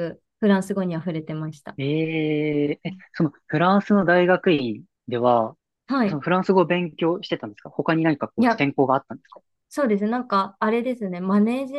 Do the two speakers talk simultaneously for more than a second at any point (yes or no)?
no